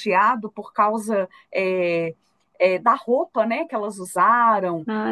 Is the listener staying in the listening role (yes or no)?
yes